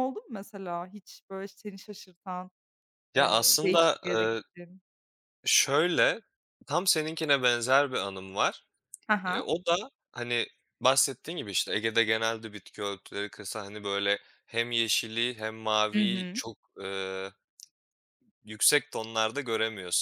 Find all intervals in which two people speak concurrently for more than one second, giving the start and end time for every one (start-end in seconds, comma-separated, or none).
3.2-4.4